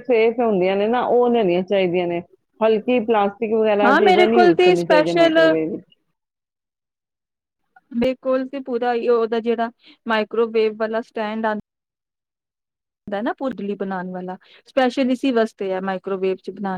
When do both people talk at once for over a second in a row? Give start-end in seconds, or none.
3.8-5.4